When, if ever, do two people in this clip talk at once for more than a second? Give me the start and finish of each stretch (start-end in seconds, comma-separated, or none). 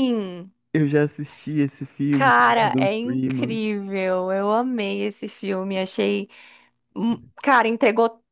2.1-3.6